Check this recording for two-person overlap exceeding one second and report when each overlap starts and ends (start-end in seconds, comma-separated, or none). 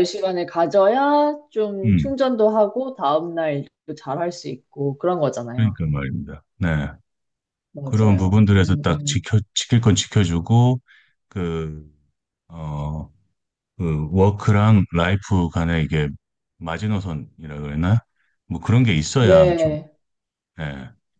7.8-9.3